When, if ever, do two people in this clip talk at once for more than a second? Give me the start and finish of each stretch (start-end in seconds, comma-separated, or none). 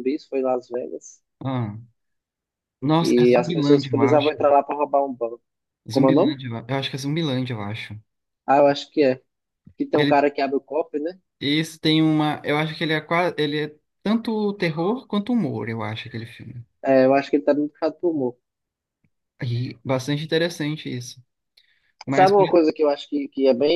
3.0-4.3